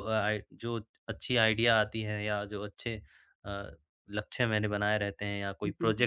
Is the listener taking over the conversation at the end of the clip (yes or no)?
no